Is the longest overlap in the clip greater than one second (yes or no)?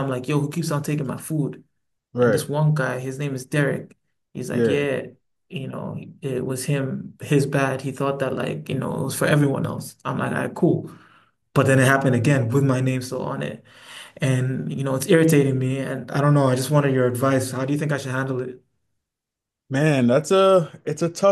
no